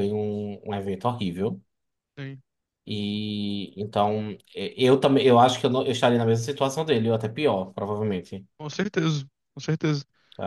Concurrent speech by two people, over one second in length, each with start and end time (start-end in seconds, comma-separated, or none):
none